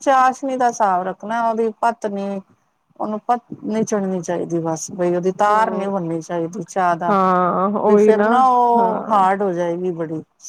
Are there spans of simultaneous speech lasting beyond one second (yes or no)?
no